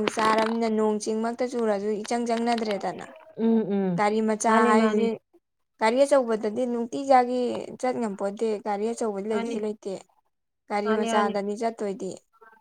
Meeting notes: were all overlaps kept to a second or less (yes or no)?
yes